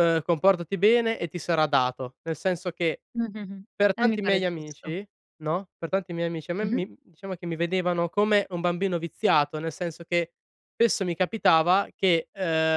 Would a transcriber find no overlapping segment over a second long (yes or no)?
no